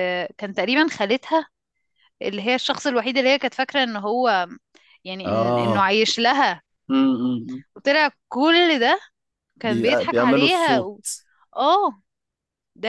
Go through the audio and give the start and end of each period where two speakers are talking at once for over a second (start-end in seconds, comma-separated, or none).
9.6-10.9